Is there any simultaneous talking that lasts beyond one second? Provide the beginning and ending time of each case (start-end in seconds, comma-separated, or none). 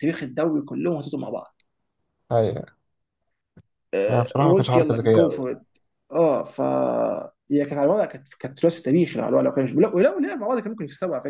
4.1-5.5